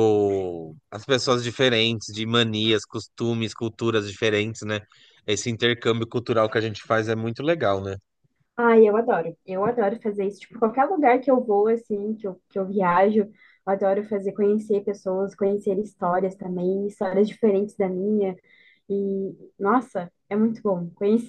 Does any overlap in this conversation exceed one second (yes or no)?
no